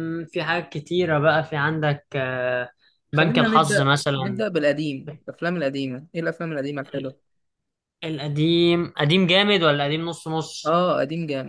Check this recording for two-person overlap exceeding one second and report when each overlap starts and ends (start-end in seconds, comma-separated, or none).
3.1-4.4